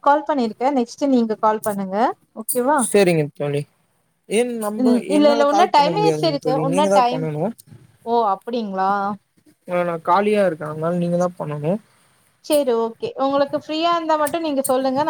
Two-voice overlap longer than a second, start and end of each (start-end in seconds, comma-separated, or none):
4.8-7.2